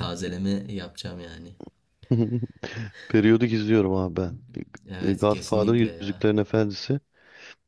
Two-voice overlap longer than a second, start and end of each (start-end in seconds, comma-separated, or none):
5.0-6.3